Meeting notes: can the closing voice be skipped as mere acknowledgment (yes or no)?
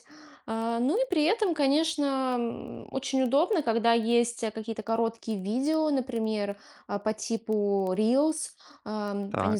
yes